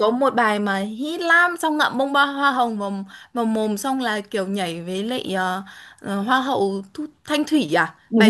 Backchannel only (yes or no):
no